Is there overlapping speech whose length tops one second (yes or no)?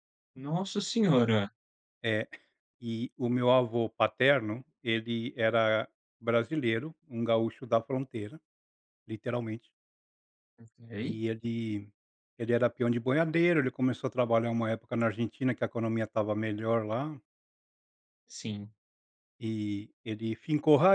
no